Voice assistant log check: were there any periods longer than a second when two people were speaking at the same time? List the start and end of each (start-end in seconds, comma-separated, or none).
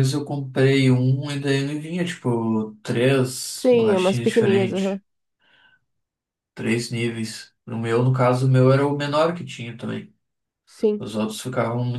3.5-5.0